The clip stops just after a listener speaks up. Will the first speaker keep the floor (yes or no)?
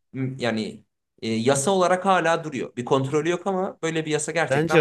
no